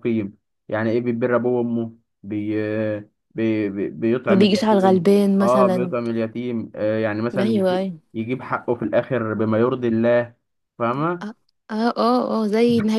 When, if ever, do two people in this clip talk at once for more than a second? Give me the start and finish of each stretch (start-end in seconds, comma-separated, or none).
4.3-5.9